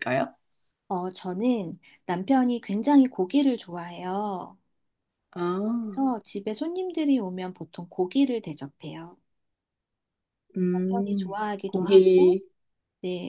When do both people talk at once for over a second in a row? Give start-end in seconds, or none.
10.7-12.4